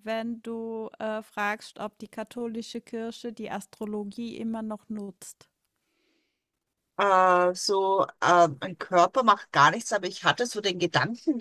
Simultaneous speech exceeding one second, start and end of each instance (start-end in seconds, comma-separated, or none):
none